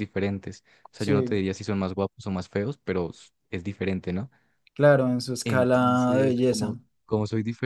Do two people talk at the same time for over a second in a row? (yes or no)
yes